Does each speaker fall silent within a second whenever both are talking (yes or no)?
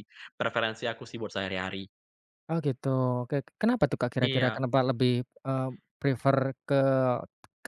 yes